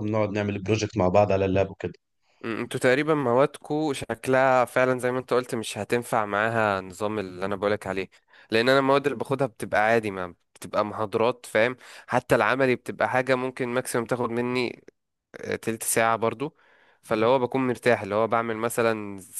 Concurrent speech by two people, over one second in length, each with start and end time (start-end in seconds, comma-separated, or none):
none